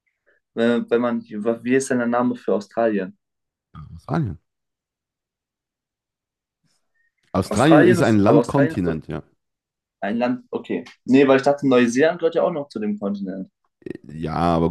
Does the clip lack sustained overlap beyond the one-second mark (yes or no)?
no